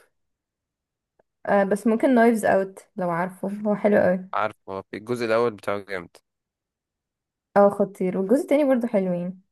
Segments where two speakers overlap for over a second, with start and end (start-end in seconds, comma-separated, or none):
none